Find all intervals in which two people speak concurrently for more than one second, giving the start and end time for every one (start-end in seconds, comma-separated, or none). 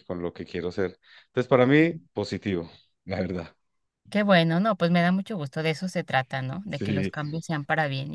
none